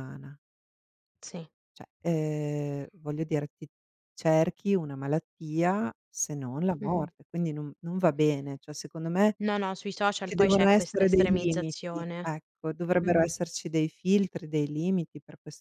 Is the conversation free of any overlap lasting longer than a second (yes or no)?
no